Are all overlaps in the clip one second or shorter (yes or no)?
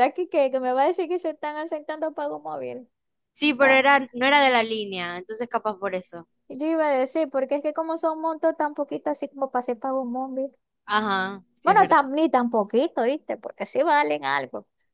yes